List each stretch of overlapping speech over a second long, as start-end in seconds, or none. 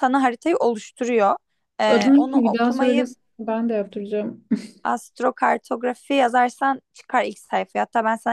1.9-3.1